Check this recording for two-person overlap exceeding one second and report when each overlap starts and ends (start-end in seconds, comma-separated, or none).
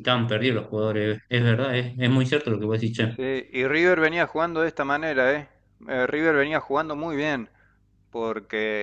none